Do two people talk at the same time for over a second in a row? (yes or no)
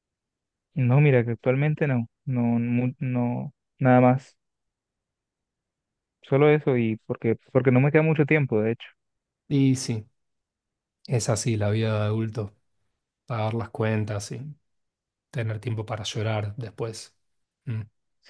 no